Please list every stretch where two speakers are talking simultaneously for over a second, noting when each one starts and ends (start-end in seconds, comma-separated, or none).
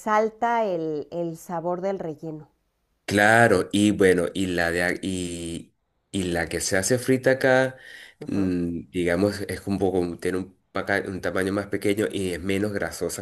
none